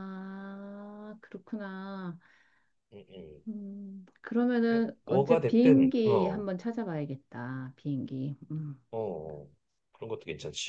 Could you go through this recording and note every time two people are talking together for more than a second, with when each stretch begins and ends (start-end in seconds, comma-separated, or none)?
5.1-6.5